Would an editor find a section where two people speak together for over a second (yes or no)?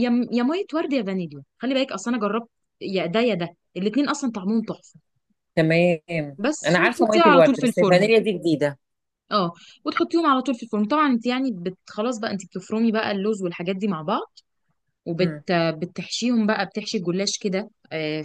yes